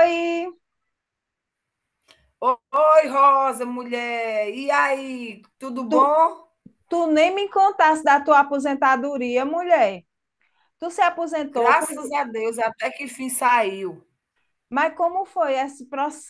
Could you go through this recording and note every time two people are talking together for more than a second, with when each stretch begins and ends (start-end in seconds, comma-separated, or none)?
none